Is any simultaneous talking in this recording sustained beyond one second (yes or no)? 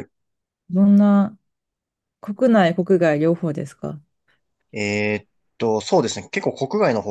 no